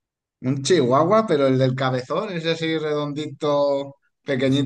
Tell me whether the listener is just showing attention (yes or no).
no